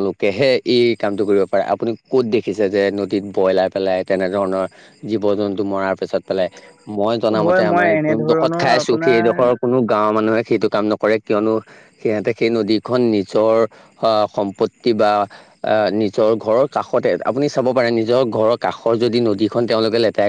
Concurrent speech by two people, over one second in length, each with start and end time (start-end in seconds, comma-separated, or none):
7.4-9.4